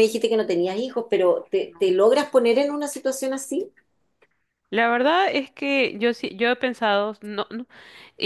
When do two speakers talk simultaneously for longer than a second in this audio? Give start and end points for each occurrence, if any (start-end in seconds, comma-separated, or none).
none